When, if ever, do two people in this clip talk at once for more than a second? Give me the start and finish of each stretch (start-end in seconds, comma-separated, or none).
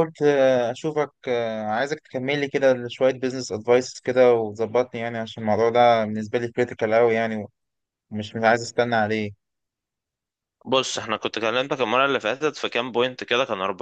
none